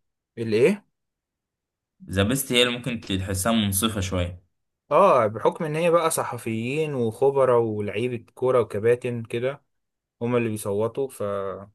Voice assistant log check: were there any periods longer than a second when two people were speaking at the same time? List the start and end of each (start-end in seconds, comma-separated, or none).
none